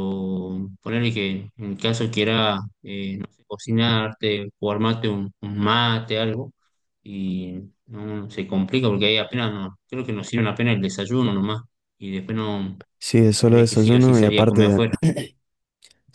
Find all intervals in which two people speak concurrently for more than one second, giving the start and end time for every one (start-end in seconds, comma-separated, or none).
13.4-14.8